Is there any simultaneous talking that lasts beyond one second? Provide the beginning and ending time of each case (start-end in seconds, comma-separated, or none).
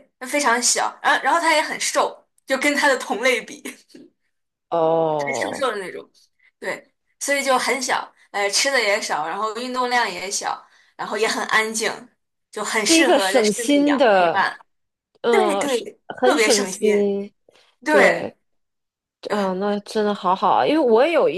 12.9-14.5, 15.3-16.8